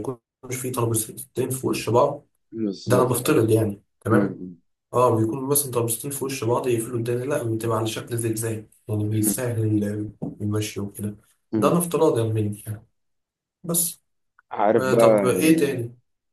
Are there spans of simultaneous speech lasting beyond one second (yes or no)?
no